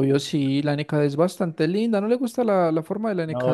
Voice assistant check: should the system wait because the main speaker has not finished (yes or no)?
no